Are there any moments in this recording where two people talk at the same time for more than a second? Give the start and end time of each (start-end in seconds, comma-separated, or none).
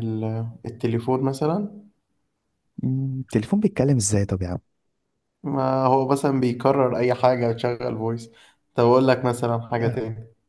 none